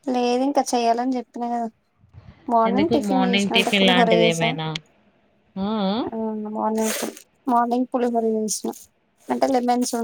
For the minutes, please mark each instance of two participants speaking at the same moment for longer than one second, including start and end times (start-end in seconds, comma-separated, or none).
2.7-4.5